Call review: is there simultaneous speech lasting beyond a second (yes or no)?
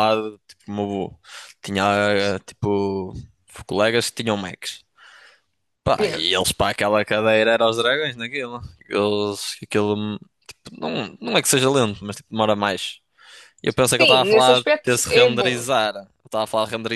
yes